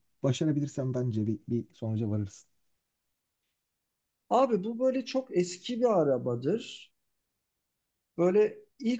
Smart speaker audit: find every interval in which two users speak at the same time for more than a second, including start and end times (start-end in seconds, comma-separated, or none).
none